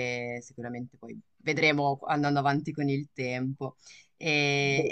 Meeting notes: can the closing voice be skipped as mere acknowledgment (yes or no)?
yes